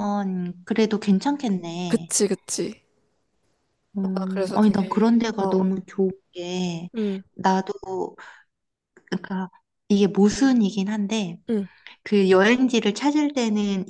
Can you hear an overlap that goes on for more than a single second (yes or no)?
yes